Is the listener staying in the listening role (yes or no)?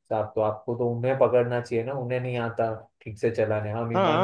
no